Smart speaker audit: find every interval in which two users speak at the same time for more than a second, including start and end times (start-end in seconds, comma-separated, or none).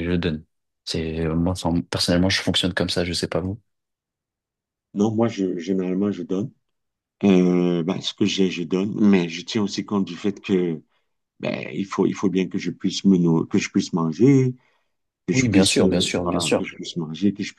15.3-16.7